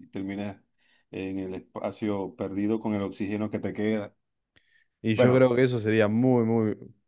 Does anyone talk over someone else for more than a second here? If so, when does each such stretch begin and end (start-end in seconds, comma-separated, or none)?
none